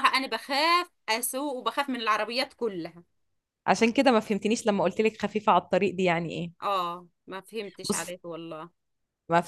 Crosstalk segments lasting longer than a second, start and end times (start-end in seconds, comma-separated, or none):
none